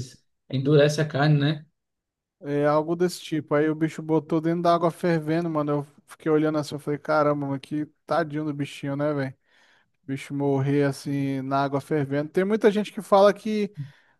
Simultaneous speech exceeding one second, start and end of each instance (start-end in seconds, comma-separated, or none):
none